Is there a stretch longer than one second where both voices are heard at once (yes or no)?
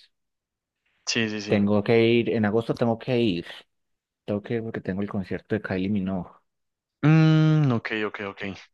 no